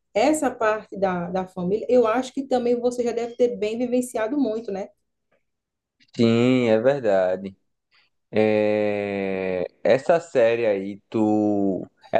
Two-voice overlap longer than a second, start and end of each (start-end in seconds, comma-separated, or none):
none